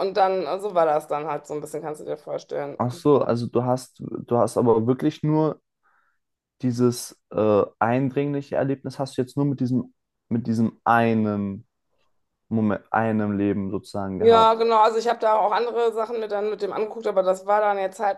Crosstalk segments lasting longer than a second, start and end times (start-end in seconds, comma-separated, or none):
none